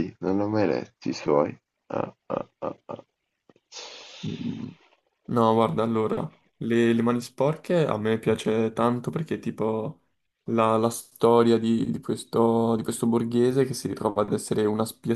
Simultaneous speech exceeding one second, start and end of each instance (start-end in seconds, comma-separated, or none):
none